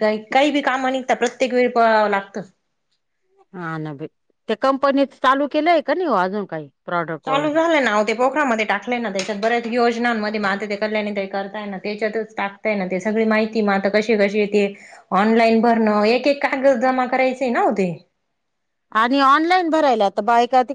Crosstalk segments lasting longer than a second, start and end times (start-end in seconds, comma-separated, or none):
none